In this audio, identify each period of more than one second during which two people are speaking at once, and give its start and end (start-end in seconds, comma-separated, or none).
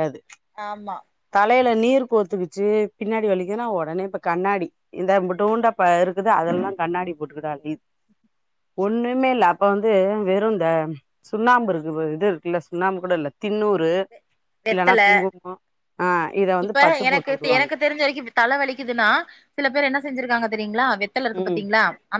none